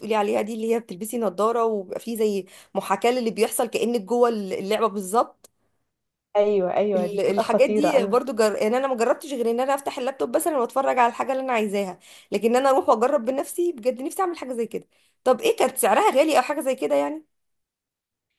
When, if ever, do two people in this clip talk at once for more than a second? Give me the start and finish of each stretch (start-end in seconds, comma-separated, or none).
7.0-8.2